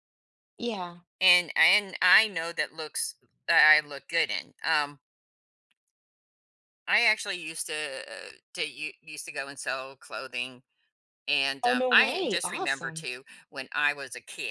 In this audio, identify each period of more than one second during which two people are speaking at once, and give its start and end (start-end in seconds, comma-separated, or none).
11.6-13.1